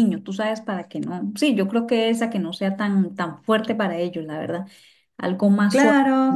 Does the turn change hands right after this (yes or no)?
yes